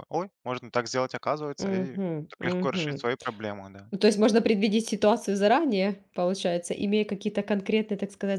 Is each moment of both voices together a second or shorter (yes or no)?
no